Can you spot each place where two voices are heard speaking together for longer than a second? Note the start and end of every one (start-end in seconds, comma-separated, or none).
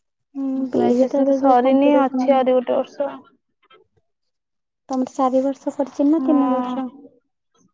0.8-2.4